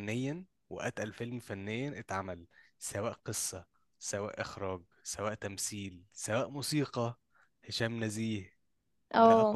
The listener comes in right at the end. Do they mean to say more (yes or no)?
no